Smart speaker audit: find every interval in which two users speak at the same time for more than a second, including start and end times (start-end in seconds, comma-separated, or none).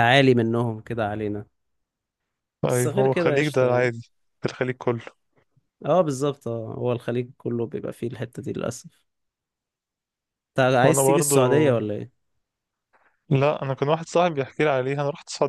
2.7-3.9